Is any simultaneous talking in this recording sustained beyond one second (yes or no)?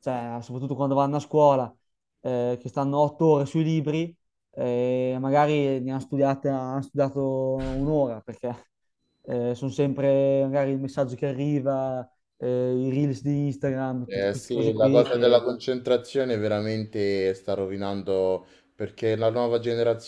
yes